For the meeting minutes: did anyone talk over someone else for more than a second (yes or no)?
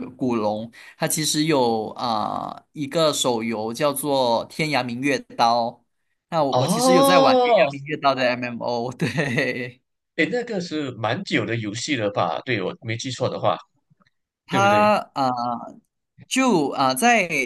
yes